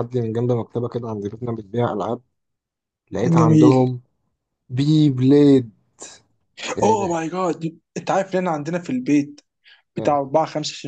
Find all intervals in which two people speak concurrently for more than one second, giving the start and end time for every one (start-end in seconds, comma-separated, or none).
none